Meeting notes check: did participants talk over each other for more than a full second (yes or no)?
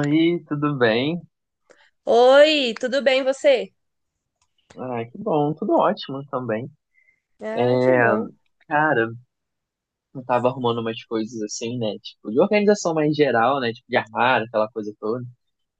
no